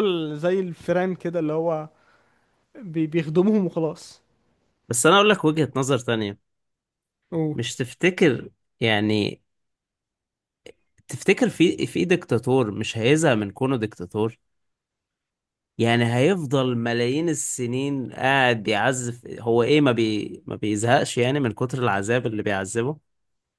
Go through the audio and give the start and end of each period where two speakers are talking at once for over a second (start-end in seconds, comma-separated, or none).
none